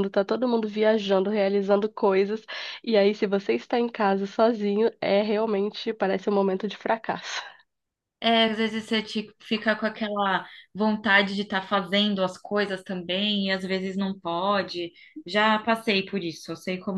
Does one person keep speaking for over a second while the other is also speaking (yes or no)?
no